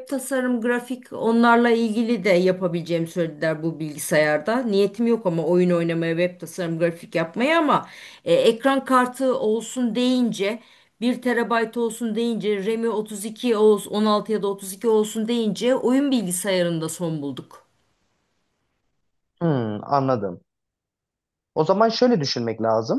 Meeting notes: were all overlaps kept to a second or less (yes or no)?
yes